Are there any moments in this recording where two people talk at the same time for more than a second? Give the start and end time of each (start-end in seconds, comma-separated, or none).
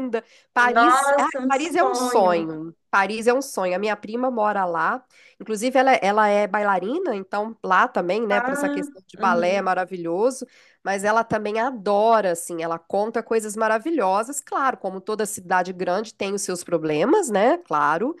0.7-2.5